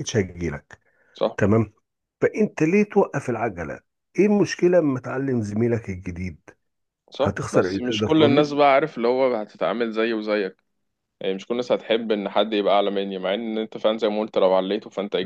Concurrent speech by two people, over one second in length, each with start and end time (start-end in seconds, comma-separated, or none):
7.2-8.6